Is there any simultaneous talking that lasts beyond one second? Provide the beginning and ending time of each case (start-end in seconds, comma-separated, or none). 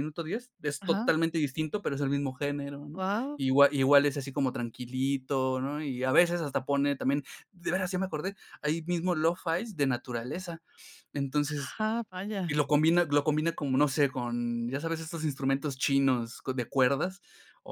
none